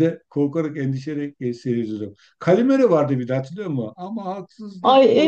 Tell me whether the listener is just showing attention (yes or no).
no